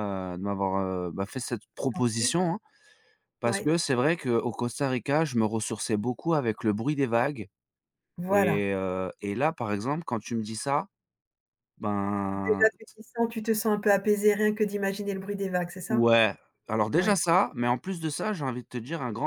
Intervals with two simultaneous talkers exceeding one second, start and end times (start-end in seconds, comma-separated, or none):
none